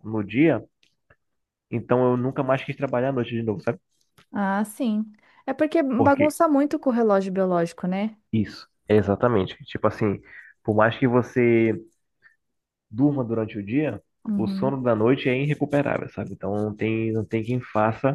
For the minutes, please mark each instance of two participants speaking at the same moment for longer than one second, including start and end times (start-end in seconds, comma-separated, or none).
none